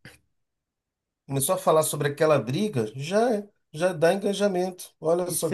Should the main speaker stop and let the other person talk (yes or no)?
yes